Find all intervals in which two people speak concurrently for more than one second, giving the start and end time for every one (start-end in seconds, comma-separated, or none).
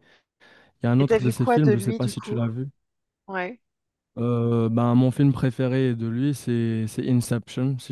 1.0-2.4